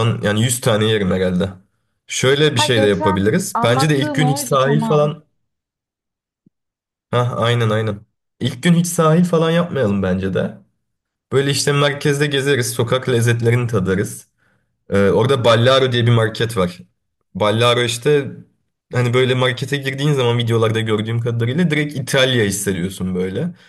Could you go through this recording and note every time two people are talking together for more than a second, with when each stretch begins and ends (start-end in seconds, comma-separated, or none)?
2.5-5.1